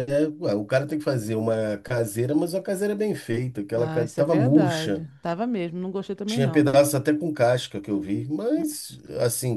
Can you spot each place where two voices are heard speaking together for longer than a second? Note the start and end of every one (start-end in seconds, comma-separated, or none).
3.8-5.0